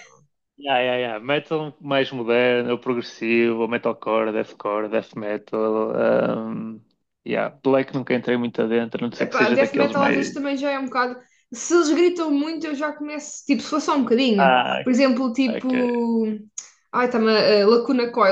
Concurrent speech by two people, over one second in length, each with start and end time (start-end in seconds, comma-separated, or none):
9.2-10.4